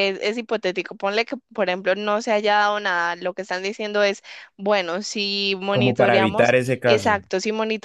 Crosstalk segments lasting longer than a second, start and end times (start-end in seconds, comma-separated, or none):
5.7-7.2